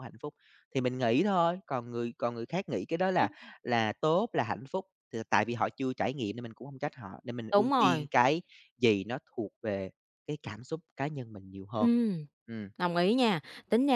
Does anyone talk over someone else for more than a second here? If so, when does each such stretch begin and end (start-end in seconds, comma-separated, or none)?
none